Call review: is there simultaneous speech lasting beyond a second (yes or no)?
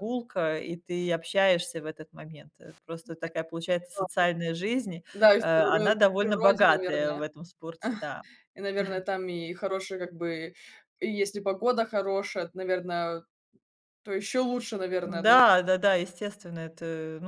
yes